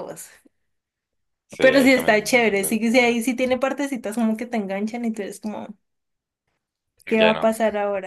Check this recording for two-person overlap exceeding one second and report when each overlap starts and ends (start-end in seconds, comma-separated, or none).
1.6-3.2